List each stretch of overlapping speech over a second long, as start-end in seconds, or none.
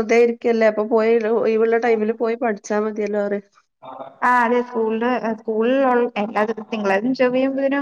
none